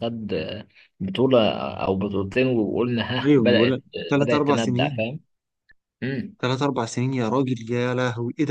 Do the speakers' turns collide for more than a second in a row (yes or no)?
yes